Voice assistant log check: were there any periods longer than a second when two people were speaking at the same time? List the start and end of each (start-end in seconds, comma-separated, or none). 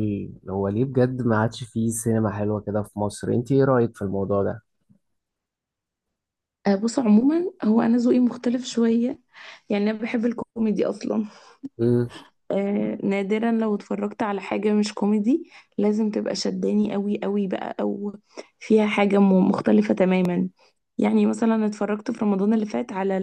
none